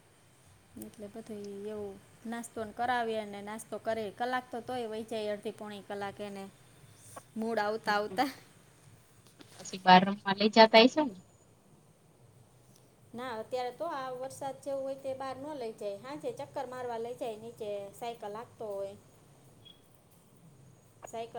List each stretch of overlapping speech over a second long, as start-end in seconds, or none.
none